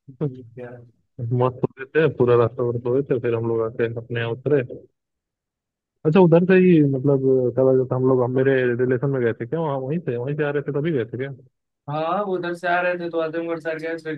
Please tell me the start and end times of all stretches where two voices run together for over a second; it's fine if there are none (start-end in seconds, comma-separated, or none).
none